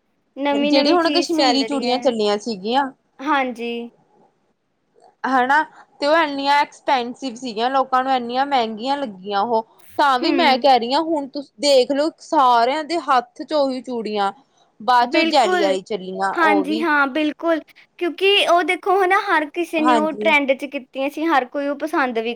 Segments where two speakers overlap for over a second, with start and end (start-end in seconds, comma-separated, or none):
0.7-2.0